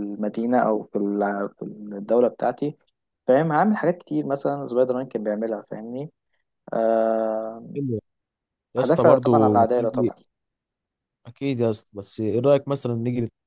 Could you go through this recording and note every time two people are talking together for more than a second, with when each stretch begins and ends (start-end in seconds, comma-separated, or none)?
8.8-10.1